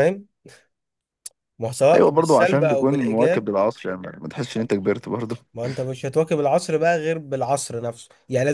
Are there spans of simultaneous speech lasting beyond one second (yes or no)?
yes